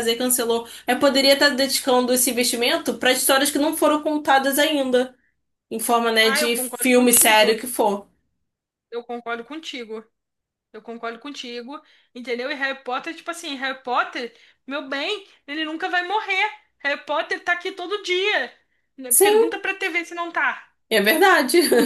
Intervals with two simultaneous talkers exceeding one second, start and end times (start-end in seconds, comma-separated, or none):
6.2-7.5